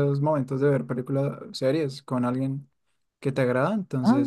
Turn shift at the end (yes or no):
no